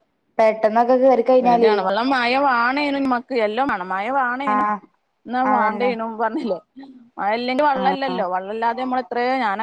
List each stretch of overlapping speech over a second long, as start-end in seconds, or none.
none